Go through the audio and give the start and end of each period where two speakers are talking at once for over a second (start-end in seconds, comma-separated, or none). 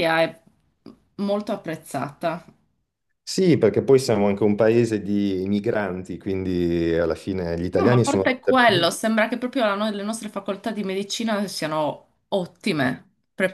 7.7-8.9